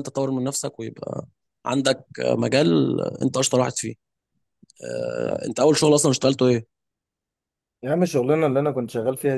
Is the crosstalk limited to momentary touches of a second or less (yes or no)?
yes